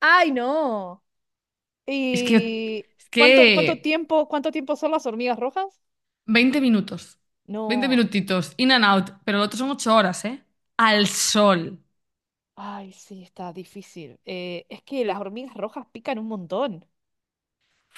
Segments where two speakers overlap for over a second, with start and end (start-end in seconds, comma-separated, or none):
2.1-4.0